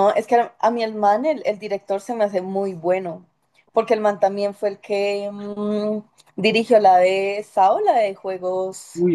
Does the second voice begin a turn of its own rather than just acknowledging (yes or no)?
yes